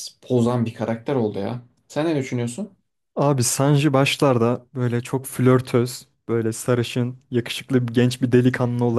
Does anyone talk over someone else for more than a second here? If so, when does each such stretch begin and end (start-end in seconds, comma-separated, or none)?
none